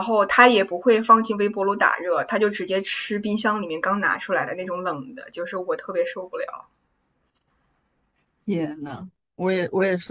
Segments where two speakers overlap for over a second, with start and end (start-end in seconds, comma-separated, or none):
none